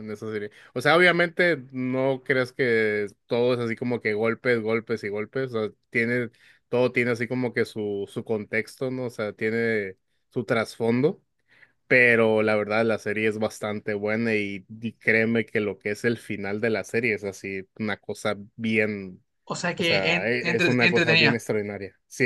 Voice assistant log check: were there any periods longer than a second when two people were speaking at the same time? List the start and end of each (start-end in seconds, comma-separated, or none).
19.8-21.4